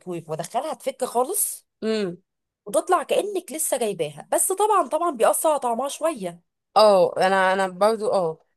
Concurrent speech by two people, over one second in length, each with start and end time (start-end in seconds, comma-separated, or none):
none